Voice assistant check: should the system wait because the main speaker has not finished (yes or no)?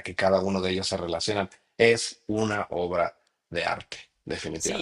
no